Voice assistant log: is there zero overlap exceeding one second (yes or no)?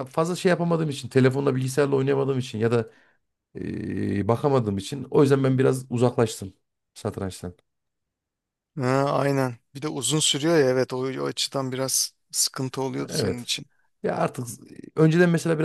yes